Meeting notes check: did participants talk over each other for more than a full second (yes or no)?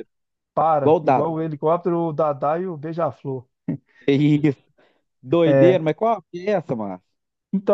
no